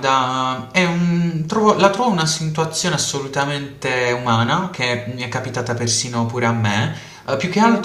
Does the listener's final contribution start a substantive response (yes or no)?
no